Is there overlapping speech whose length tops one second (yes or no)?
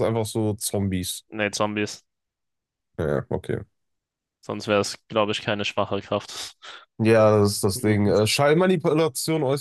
no